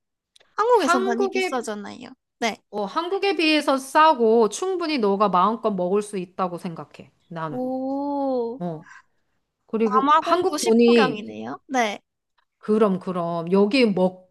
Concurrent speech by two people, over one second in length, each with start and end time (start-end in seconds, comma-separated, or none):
9.8-11.3